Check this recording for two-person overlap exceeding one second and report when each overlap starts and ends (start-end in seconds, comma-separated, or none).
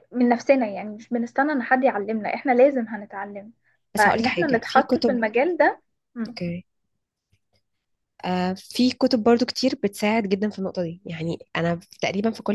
4.0-5.2